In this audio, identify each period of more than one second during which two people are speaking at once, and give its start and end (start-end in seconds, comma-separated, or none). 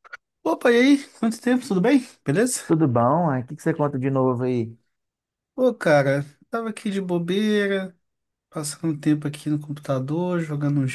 none